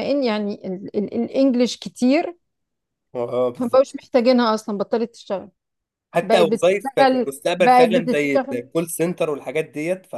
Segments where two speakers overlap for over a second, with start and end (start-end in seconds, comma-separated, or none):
6.2-8.6